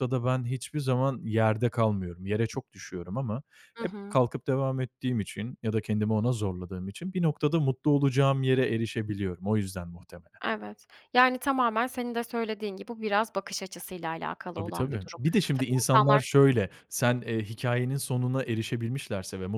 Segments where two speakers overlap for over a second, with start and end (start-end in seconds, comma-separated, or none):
14.6-16.3